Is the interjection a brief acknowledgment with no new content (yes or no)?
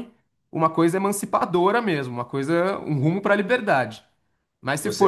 yes